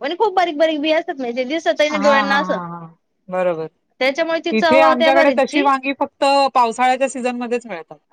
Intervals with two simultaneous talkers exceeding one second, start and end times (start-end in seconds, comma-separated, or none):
4.0-5.6